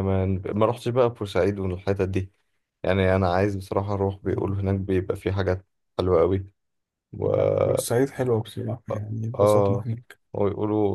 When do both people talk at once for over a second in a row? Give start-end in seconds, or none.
none